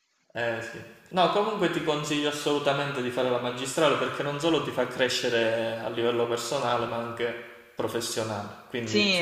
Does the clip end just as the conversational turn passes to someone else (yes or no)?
yes